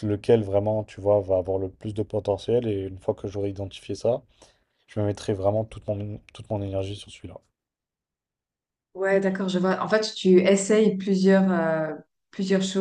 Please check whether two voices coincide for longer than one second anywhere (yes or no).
no